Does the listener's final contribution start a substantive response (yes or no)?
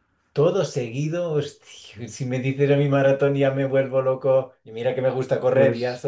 no